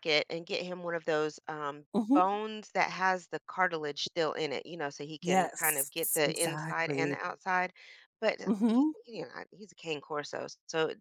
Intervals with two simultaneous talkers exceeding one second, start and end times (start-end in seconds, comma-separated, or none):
5.2-7.2